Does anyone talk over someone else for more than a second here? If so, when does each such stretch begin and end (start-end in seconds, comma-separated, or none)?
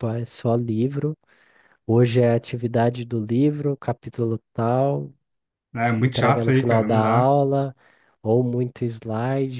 6.0-7.3